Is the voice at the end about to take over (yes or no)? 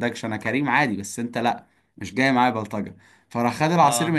no